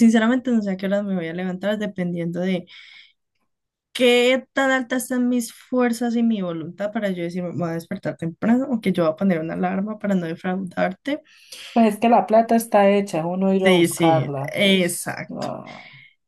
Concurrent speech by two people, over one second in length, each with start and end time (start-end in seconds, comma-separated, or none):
13.6-15.5